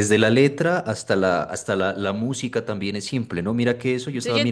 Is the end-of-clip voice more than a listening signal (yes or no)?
no